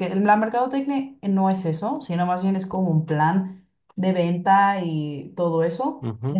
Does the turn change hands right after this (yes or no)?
yes